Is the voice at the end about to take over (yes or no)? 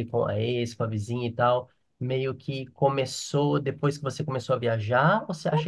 yes